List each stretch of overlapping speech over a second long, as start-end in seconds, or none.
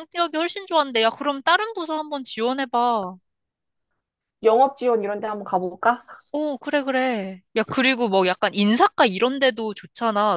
none